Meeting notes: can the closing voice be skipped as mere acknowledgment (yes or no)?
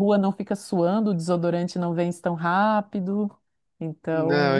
no